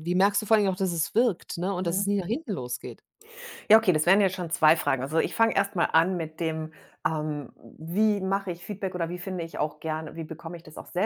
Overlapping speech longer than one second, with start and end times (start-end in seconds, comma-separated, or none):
none